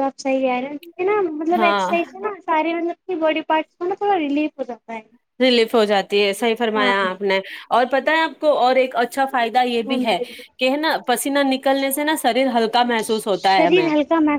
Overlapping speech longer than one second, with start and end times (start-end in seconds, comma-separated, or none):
none